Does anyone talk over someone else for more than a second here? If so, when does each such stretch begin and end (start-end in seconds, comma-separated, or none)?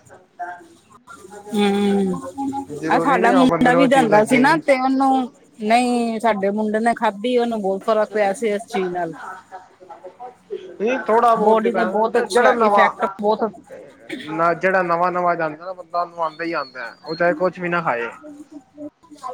2.9-4.6